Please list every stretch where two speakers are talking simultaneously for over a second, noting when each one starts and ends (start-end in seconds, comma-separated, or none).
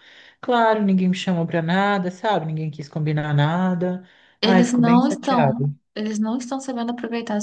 4.4-5.7